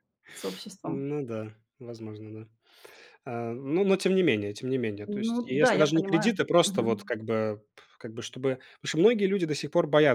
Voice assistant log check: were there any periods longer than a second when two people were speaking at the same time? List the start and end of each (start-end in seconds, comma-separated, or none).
5.3-7.1